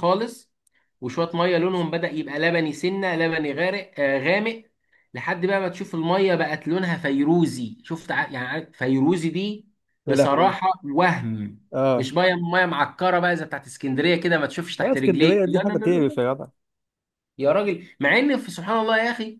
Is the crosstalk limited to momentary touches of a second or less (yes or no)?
no